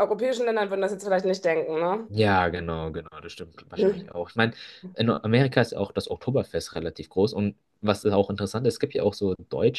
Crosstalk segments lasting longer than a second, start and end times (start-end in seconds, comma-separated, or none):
none